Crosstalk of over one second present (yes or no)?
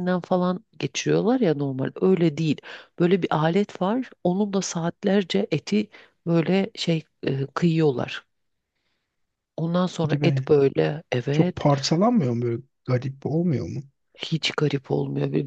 no